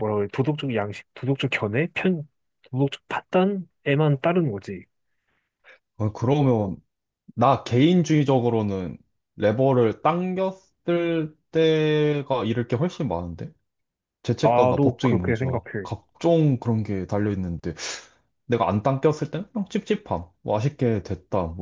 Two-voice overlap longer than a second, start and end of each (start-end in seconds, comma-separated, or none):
14.4-15.9